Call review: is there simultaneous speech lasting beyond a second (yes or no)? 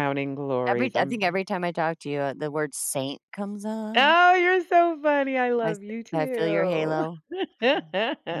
yes